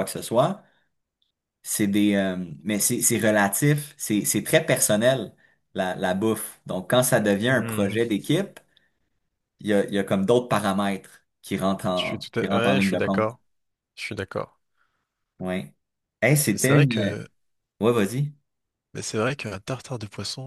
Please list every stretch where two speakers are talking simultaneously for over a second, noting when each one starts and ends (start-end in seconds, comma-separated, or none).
12.0-13.3